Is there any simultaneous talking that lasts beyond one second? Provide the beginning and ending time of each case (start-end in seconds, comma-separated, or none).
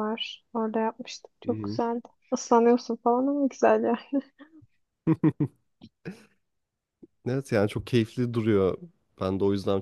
none